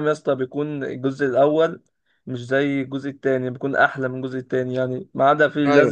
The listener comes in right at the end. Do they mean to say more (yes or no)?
no